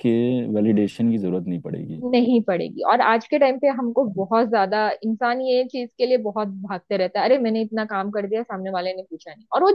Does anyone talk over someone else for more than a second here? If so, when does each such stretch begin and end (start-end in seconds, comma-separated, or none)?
none